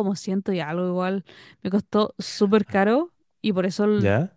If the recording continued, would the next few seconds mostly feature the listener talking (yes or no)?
no